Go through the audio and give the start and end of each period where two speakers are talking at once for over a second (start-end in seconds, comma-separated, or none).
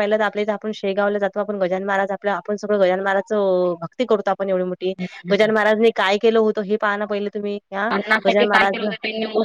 none